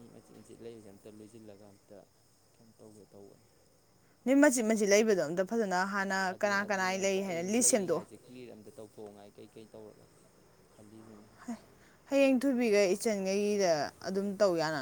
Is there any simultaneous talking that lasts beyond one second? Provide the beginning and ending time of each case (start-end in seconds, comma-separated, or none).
6.3-8.1